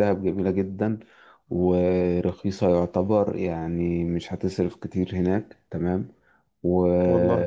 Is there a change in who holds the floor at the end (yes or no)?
no